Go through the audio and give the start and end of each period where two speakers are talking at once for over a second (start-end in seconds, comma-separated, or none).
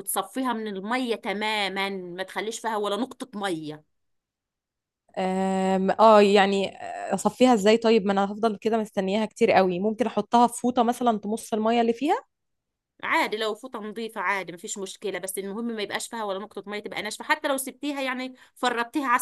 none